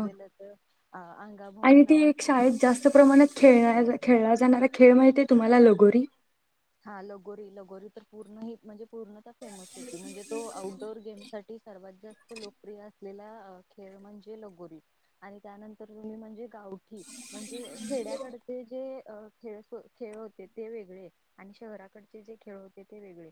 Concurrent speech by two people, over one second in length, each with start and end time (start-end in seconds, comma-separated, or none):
none